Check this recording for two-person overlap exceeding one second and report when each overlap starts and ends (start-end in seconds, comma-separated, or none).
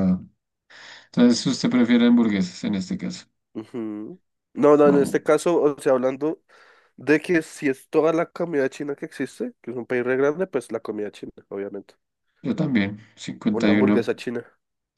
none